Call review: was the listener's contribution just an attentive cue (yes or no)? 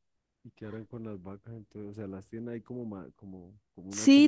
no